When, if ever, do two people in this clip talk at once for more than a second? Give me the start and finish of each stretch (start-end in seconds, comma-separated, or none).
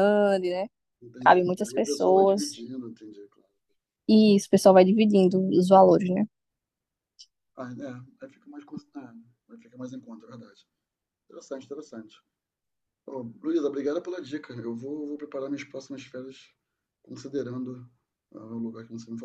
1.2-2.6